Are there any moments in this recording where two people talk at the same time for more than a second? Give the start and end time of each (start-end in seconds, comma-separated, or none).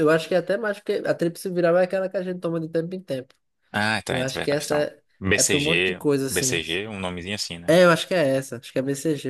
4.1-6.6